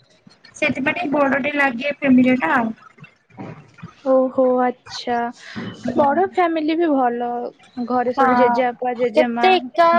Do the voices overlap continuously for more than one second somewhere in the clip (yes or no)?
yes